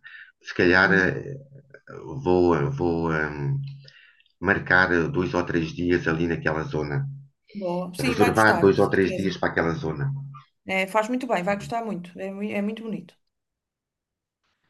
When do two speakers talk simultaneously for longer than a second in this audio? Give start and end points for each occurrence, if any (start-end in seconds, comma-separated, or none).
8.0-9.3